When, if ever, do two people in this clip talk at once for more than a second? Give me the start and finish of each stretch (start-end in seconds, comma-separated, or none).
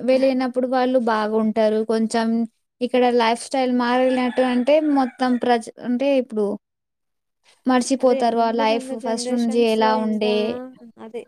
8.0-10.3